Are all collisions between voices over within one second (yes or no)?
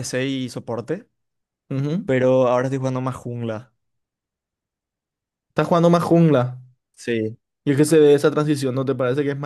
yes